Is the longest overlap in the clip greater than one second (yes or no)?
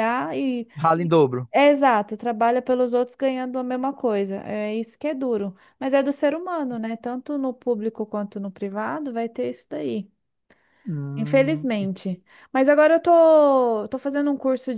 no